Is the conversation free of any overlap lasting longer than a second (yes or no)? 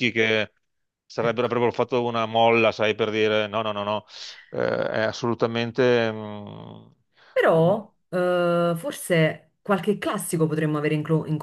yes